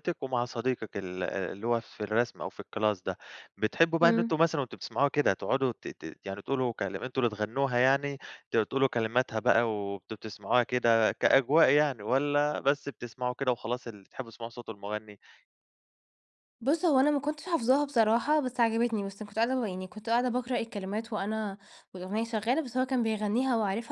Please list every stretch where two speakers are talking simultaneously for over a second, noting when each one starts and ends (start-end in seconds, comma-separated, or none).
none